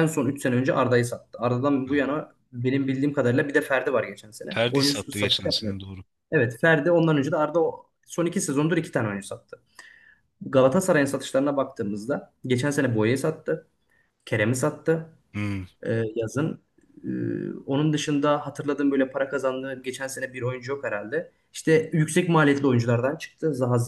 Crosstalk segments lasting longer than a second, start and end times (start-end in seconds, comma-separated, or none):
4.5-5.8